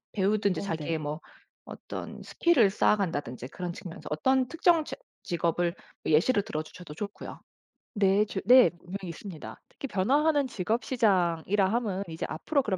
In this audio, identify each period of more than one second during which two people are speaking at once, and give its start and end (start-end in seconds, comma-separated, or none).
none